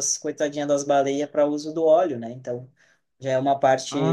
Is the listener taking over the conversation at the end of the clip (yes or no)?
yes